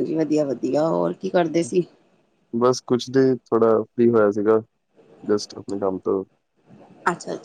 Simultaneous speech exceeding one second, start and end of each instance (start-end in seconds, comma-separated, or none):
none